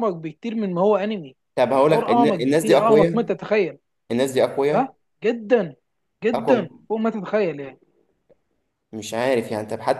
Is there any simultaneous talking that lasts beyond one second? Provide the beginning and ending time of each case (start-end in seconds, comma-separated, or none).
1.5-3.3